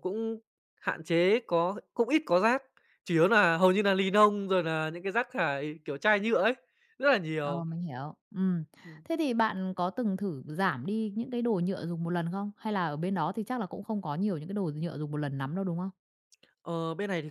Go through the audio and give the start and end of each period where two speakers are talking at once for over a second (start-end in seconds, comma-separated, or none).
none